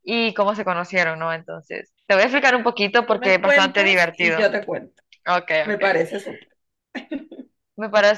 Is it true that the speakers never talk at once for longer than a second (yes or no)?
no